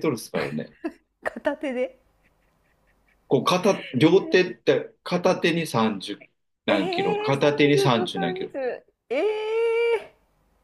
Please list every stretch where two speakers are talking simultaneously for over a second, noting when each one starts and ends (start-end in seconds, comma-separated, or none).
6.7-8.5